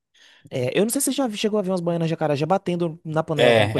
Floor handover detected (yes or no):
yes